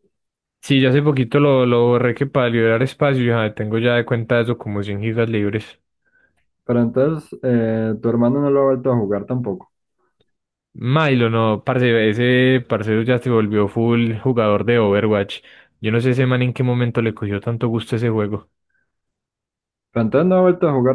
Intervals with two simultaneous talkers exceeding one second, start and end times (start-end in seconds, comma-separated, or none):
none